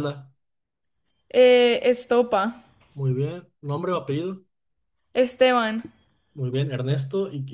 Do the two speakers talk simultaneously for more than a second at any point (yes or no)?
no